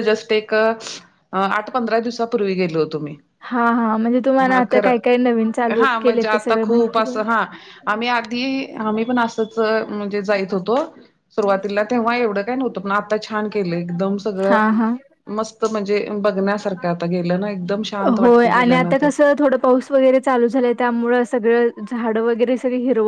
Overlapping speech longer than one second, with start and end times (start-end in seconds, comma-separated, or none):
5.8-7.2